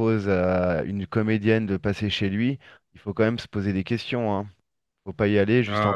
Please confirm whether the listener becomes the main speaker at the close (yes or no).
yes